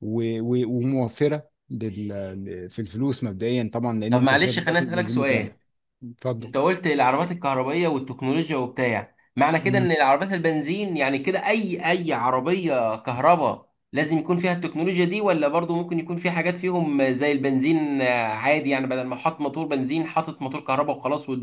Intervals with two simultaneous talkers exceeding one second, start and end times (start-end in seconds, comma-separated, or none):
4.1-5.5